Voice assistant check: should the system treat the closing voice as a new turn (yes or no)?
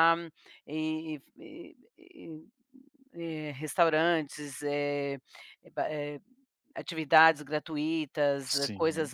no